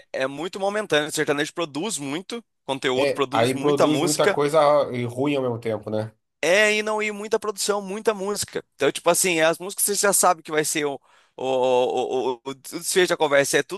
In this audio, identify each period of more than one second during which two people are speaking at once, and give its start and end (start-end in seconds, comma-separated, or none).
2.9-4.4